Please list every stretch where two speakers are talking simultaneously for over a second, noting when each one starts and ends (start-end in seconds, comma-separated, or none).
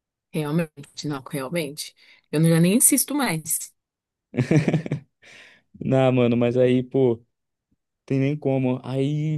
none